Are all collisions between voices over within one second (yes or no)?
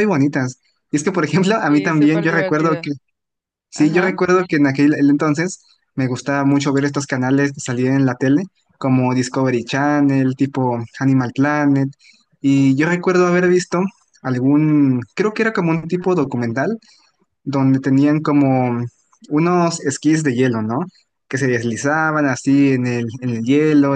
no